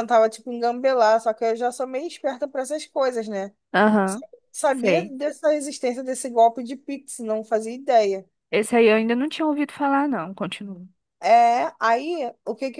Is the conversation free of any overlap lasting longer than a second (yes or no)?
yes